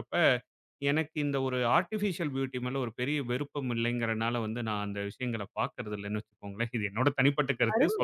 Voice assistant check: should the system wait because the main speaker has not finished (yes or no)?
no